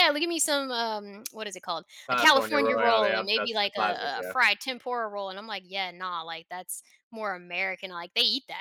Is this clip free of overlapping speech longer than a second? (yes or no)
no